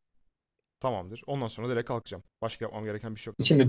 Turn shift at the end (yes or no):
yes